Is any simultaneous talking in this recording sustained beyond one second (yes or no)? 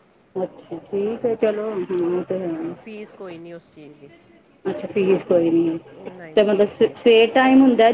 no